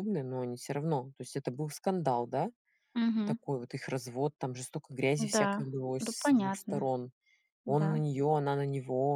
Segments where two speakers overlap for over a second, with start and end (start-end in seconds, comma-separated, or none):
5.2-6.9